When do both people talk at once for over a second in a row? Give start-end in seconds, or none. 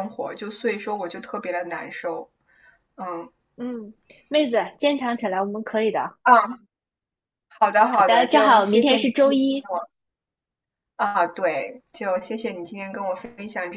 7.9-9.6